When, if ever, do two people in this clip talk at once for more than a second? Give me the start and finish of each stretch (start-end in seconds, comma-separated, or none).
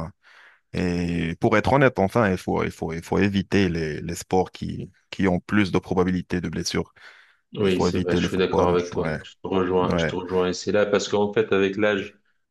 7.6-9.2